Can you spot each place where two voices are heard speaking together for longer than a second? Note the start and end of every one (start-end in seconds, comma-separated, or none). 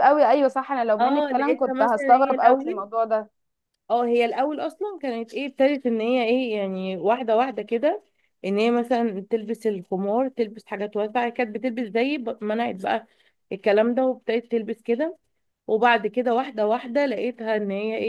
1.0-2.9